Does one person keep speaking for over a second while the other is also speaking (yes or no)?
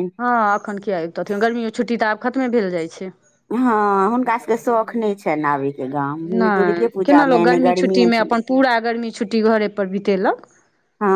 yes